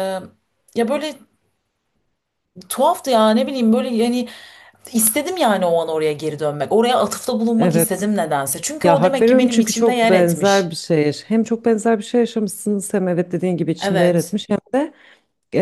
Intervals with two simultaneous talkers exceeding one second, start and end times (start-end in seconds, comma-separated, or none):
8.8-10.8